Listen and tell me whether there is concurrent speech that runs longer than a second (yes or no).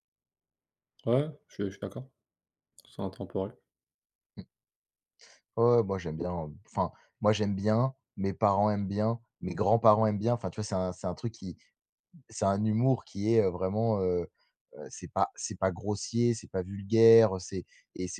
no